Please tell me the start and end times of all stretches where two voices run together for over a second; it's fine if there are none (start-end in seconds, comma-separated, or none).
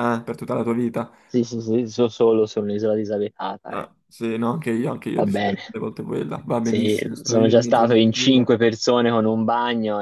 6.6-8.5